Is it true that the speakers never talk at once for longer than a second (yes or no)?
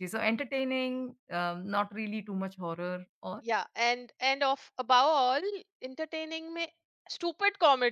yes